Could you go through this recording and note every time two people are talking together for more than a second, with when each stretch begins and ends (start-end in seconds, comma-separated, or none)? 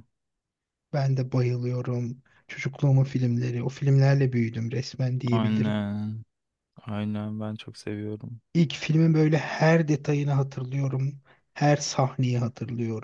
none